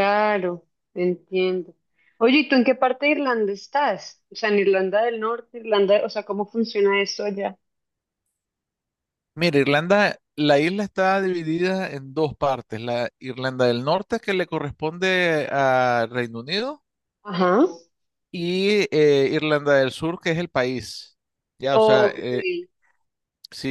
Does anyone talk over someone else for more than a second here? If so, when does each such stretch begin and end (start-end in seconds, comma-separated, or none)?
none